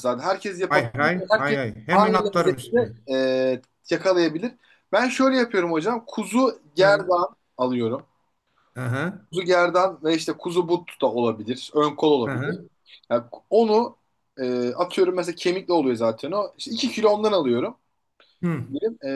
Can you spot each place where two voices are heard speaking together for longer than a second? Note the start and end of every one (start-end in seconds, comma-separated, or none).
0.7-2.9